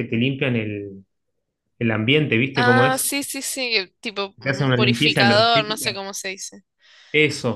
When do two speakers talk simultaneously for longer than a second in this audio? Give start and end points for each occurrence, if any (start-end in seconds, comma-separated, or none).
4.4-6.0